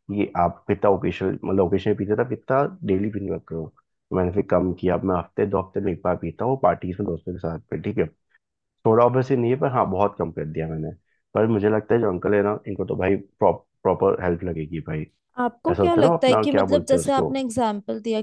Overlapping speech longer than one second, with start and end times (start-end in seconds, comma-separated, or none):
15.7-17.3